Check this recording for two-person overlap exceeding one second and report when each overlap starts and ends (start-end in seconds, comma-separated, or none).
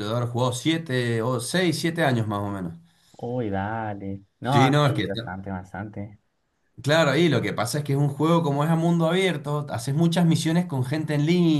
none